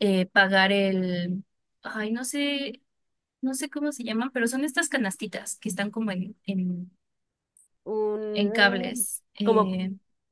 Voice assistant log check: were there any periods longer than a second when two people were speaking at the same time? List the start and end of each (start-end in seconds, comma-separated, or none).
8.3-9.8